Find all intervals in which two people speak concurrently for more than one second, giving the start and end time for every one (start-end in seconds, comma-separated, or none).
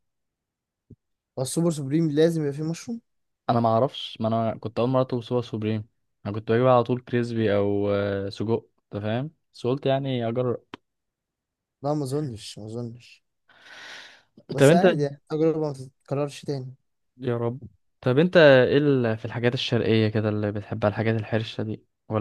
none